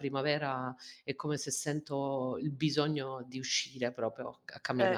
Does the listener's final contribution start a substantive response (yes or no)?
yes